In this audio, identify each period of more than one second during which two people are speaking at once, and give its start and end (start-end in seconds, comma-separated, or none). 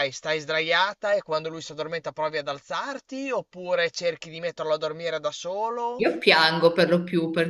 none